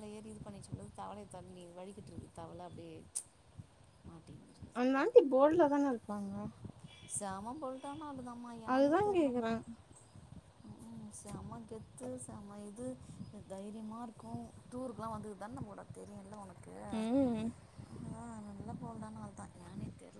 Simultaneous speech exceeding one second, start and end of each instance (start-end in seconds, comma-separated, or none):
none